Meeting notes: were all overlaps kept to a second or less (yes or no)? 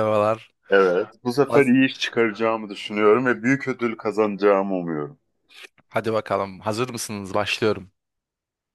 yes